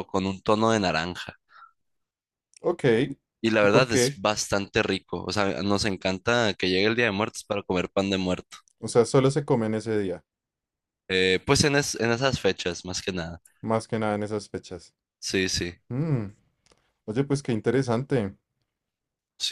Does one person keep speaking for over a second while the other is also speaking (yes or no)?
no